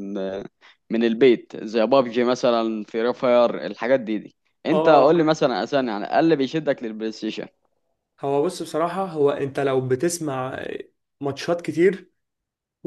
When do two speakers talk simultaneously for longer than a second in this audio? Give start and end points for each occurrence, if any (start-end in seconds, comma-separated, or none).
none